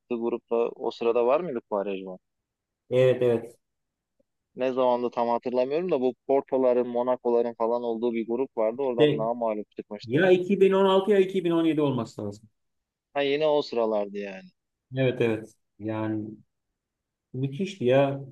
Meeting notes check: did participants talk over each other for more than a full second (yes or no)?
no